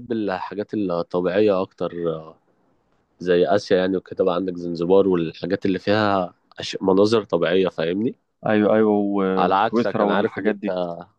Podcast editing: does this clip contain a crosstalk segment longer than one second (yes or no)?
yes